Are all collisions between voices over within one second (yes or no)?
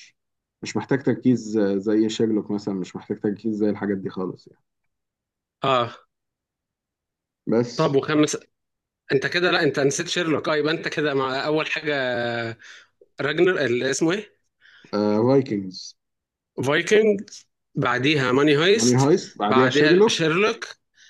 no